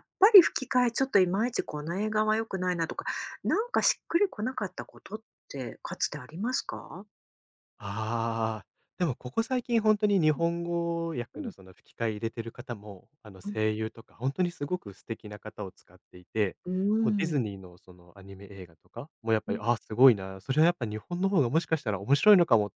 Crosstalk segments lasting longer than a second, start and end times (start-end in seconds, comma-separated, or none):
none